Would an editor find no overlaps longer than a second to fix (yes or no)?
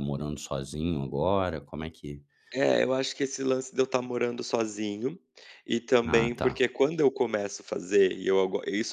yes